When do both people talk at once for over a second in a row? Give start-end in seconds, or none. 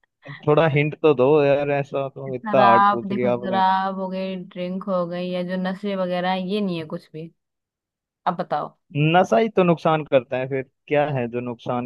2.3-3.6